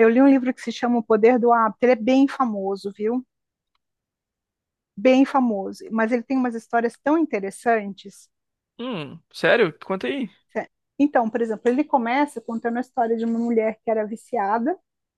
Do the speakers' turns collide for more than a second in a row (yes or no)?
no